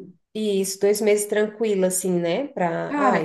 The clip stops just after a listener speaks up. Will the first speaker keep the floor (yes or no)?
no